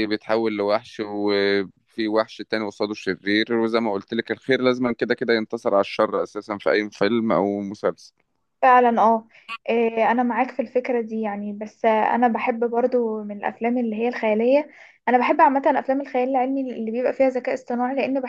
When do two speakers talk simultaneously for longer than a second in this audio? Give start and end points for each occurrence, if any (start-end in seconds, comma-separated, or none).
none